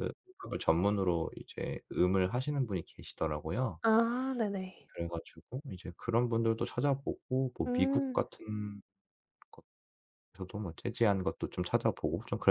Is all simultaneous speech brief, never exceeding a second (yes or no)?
yes